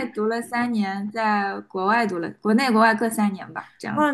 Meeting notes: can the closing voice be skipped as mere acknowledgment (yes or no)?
no